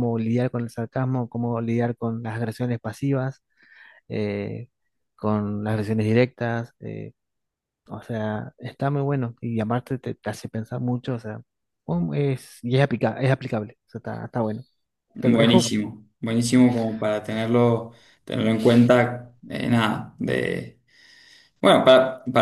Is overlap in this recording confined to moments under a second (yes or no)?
yes